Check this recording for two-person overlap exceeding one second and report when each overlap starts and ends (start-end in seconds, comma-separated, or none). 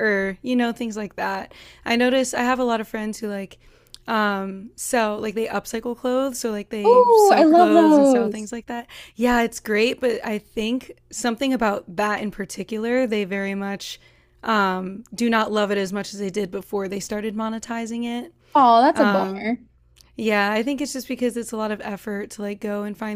6.8-8.5